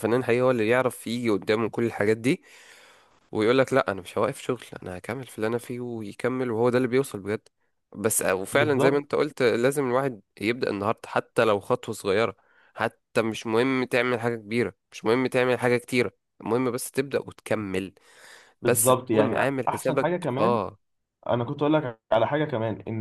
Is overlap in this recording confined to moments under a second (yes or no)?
no